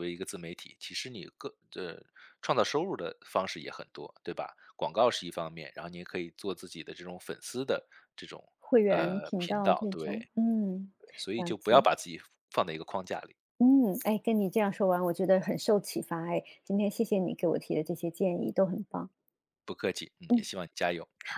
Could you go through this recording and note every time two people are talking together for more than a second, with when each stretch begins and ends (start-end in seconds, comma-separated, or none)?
8.8-10.2